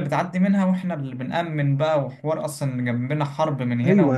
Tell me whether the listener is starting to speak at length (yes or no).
yes